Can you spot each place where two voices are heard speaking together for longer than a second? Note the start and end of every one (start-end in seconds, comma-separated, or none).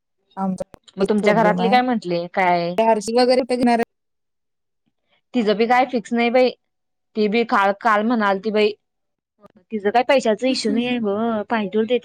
1.0-2.8